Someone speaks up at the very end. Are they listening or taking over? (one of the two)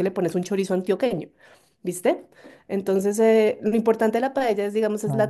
listening